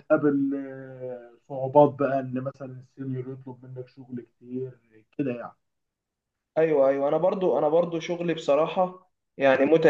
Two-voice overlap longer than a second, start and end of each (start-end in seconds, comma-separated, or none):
none